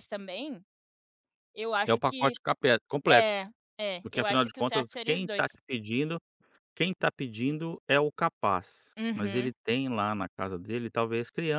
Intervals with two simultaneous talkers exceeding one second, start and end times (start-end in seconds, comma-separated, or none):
4.0-5.4